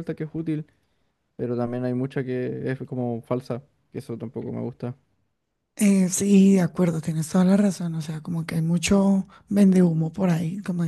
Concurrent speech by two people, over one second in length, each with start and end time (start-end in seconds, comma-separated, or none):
none